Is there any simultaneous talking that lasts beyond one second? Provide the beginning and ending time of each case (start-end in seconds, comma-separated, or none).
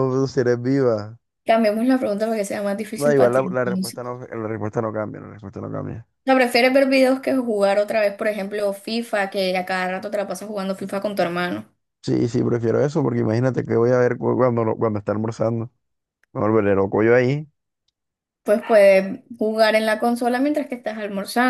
3.0-4.2